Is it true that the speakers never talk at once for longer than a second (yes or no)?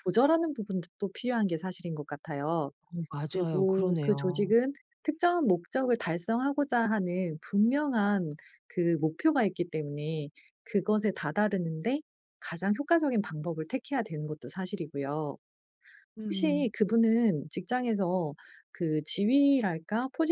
no